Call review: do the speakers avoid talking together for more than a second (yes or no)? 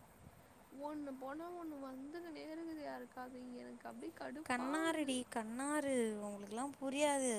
yes